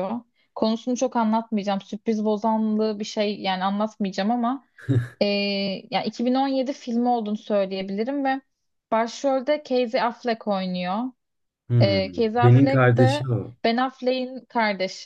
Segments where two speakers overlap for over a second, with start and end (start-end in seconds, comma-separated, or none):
11.8-13.3